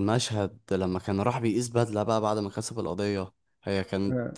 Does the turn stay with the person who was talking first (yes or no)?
yes